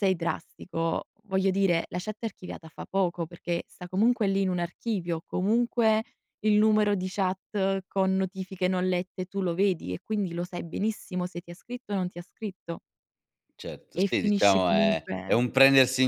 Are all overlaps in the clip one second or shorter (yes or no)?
no